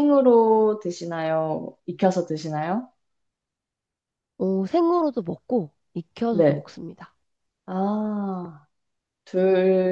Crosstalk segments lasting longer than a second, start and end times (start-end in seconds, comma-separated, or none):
none